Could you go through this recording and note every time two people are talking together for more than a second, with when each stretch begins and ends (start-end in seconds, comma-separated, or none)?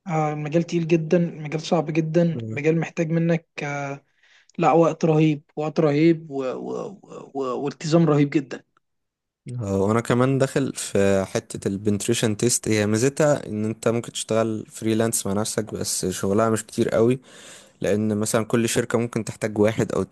none